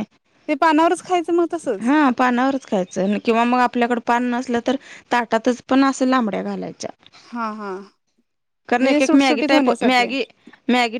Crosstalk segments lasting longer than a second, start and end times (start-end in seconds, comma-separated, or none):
8.8-10.1